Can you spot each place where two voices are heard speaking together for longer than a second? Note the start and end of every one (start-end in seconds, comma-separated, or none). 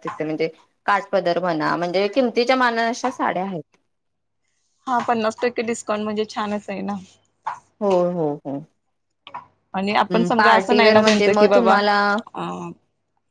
10.4-11.8